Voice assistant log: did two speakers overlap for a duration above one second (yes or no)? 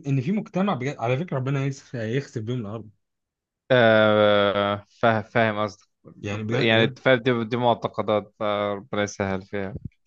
no